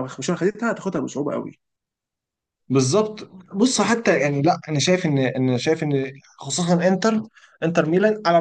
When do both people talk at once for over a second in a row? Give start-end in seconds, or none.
none